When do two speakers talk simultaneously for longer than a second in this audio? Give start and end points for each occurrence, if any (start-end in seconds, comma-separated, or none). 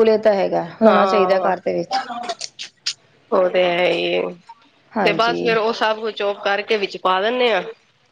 none